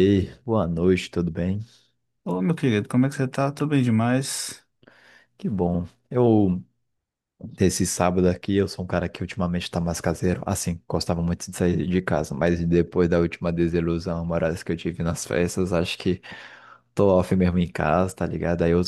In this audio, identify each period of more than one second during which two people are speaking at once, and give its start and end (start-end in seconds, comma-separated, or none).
none